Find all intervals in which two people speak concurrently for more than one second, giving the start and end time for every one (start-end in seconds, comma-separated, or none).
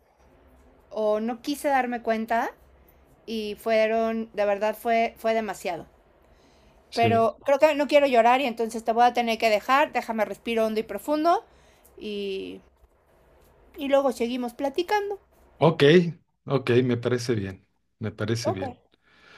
none